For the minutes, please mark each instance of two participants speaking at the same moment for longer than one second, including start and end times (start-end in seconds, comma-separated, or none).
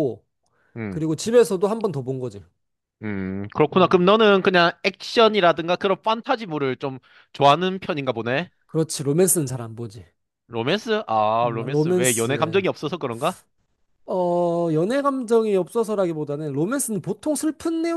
11.4-12.6